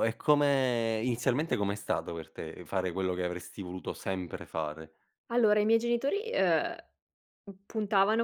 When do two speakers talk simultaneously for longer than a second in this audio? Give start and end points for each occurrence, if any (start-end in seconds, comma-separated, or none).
none